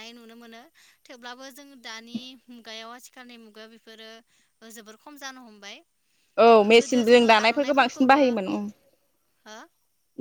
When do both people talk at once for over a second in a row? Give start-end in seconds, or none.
6.6-8.2